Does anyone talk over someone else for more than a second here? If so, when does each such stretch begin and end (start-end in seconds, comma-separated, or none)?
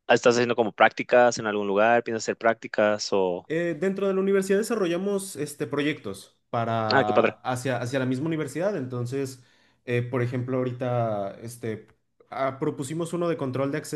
none